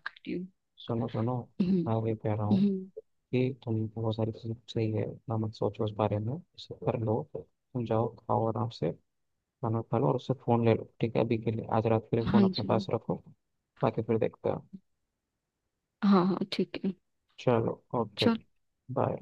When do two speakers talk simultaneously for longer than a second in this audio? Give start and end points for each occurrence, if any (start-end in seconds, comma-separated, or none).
none